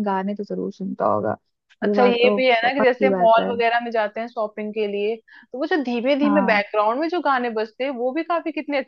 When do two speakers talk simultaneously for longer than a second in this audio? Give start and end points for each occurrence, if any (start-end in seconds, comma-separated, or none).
1.8-3.5